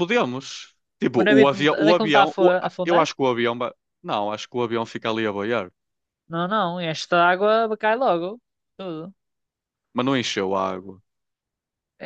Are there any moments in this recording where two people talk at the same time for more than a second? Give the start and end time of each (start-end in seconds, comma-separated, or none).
1.2-3.1